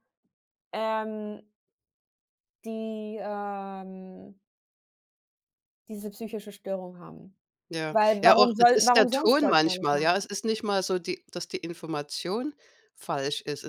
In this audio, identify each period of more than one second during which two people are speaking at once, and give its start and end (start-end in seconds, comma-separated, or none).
7.9-10.2